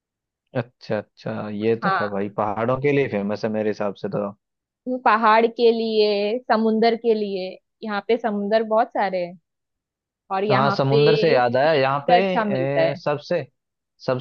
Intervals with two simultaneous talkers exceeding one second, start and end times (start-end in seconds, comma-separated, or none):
10.5-12.1